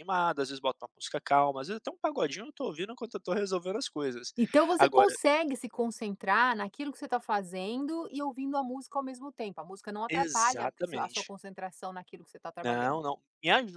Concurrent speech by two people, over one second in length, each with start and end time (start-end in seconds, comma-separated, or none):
10.1-11.3